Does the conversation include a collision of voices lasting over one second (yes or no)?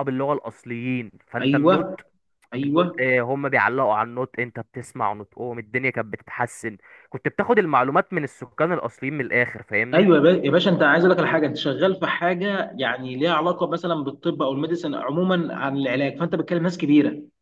no